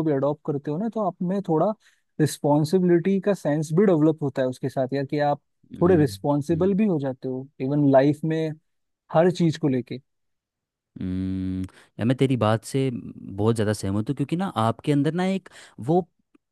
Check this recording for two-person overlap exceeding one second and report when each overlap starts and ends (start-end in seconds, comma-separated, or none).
none